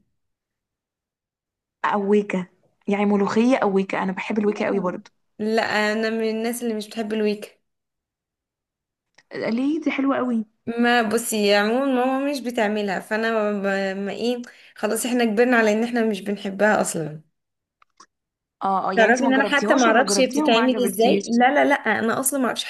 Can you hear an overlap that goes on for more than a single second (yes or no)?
yes